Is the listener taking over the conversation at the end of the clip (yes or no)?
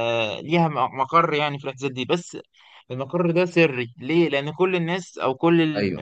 no